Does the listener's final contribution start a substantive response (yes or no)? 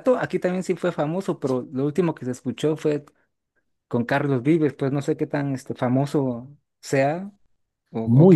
yes